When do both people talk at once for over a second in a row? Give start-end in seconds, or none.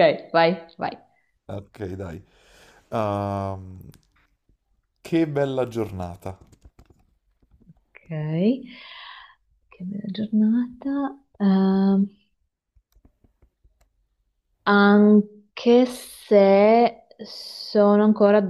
none